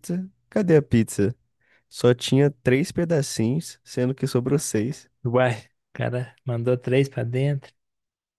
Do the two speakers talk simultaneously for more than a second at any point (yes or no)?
no